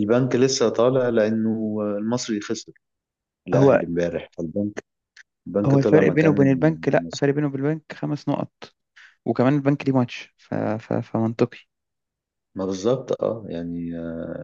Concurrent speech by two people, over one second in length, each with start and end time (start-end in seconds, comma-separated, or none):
5.7-7.2